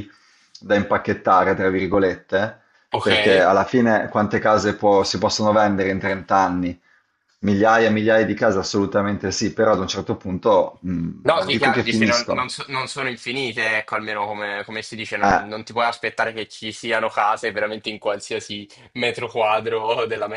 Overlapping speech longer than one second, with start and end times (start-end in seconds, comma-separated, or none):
11.2-12.5